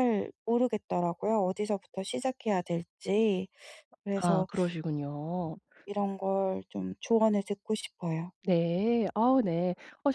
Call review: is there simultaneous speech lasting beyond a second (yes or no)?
no